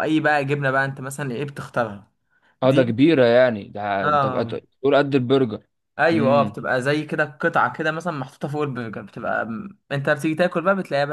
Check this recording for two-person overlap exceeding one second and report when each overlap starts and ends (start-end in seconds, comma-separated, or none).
none